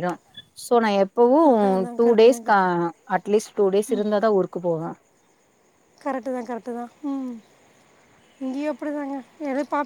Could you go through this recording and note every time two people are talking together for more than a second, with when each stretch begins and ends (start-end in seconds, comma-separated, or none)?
none